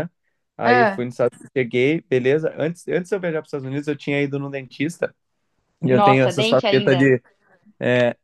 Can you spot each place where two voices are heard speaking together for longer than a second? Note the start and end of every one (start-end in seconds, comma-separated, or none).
5.9-7.1